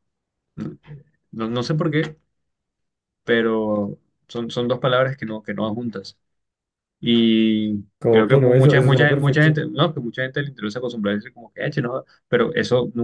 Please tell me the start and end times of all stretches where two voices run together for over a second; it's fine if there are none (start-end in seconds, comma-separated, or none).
8.0-9.6